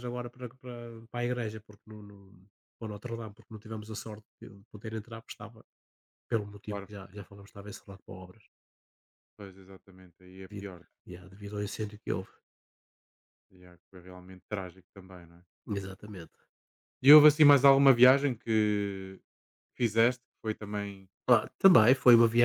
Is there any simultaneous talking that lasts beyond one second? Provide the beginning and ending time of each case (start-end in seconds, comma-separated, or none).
none